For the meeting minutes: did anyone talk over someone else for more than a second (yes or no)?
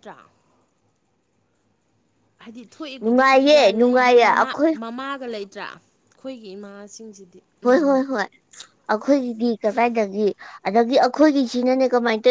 yes